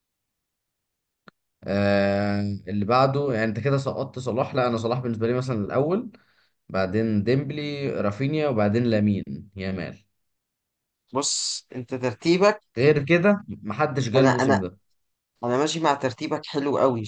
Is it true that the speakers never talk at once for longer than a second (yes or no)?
yes